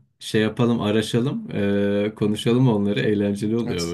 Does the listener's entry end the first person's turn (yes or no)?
yes